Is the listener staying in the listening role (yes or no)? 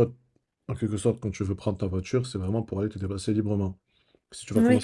yes